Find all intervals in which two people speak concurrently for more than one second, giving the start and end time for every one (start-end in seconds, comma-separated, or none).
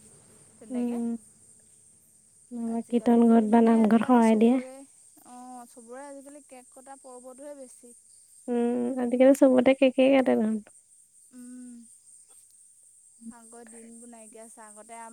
2.7-4.6